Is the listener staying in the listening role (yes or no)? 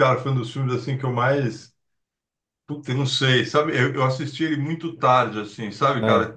yes